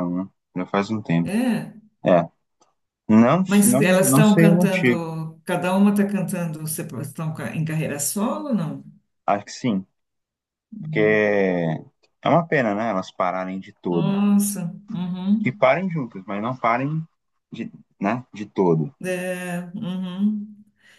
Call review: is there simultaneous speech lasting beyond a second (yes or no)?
yes